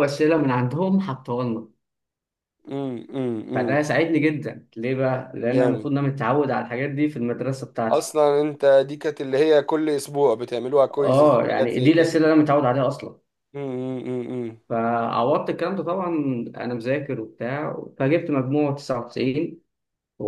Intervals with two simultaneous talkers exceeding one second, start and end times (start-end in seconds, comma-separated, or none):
11.0-12.2